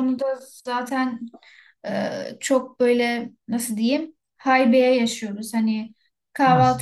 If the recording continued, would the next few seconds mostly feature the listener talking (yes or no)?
no